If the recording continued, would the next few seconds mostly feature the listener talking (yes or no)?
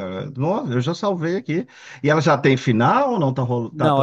yes